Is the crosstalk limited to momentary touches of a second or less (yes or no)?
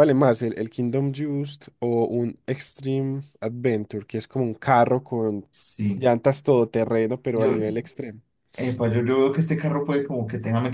yes